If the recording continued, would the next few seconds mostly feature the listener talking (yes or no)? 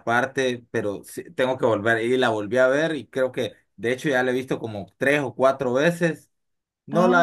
no